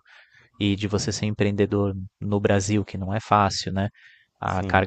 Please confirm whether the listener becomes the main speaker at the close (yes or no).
no